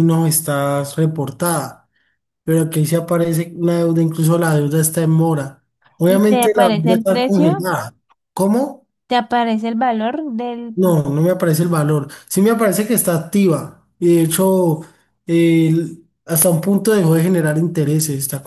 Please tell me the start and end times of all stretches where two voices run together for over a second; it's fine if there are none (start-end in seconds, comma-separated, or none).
6.0-7.7